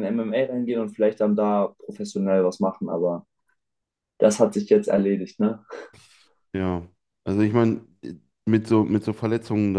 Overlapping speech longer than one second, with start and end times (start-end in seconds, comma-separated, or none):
none